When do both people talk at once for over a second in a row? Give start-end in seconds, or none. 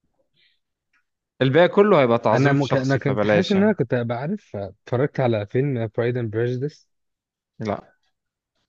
2.3-3.7